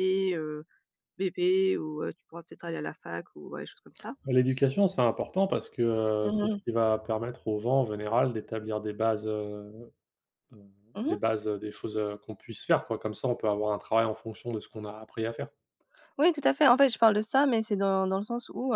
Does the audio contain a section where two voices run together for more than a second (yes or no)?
no